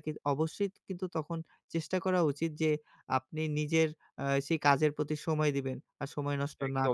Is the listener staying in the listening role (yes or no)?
no